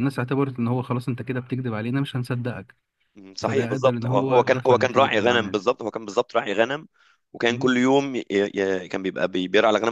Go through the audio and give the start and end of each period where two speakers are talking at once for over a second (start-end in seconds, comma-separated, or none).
3.4-5.6